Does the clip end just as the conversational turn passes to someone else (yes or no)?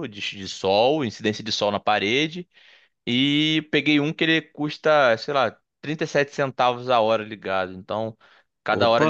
no